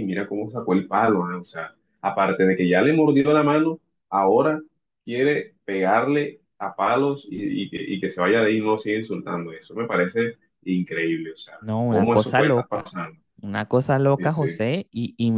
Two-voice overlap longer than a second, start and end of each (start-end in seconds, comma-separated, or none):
11.6-12.9